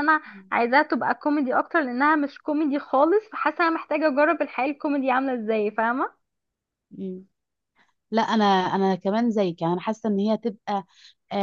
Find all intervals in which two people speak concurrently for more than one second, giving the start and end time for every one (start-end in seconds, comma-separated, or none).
none